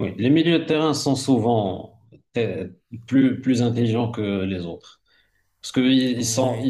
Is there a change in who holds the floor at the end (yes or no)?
no